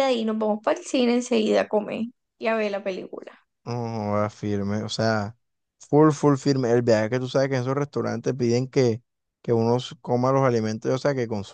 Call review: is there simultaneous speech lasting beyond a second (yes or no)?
no